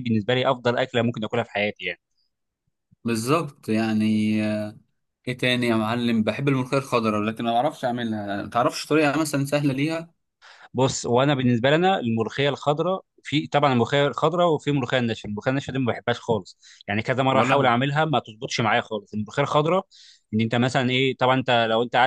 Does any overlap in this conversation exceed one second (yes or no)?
no